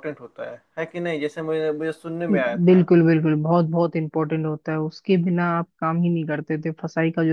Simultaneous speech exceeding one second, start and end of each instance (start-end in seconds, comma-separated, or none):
none